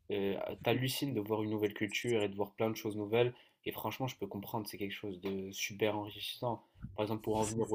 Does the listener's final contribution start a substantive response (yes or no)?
no